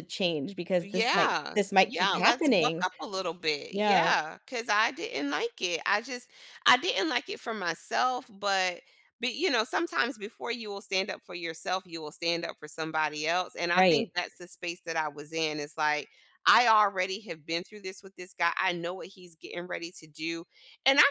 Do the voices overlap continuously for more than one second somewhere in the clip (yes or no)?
yes